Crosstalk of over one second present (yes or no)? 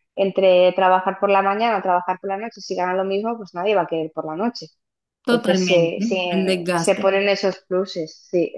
yes